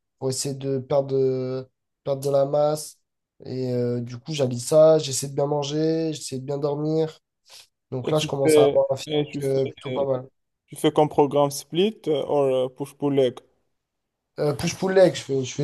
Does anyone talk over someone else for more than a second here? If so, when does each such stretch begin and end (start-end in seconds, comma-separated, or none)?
8.0-10.1